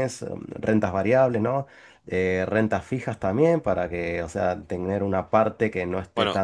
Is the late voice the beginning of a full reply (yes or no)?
yes